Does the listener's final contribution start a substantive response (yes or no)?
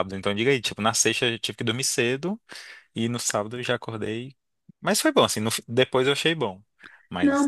yes